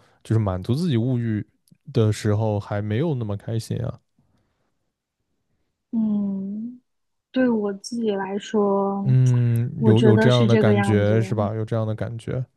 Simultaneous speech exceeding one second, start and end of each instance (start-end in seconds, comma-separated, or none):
9.8-11.1